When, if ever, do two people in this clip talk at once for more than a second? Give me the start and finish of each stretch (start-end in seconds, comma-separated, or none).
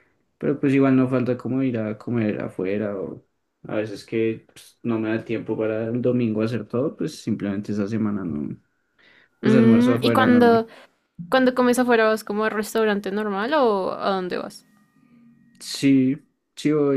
9.4-10.7